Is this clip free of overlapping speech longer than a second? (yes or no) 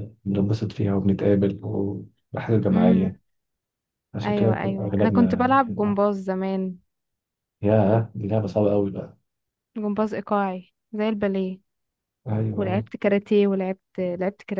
no